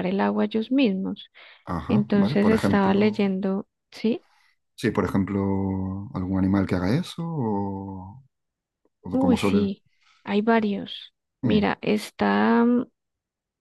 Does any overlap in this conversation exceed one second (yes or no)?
yes